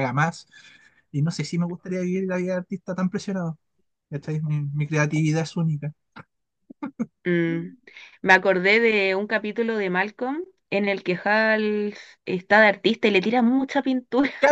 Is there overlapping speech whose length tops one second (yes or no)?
no